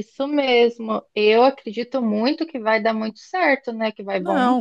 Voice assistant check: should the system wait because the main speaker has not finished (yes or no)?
no